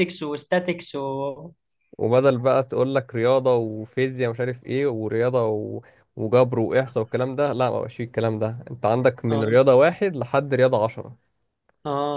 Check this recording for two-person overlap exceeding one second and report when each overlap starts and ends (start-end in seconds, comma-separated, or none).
none